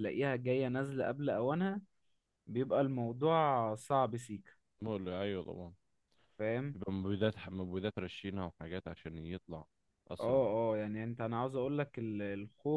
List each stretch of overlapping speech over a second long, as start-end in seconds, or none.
none